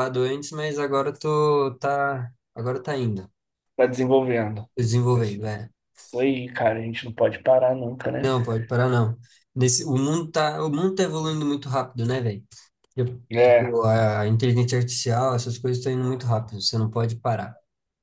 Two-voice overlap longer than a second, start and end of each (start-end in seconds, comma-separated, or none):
none